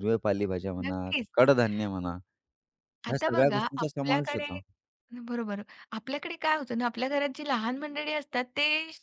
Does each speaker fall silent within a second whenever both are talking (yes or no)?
no